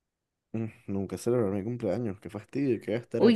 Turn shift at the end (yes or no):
yes